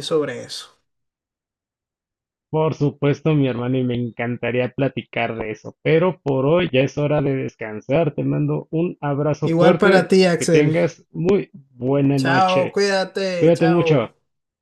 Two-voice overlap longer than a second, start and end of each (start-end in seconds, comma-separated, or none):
9.4-10.8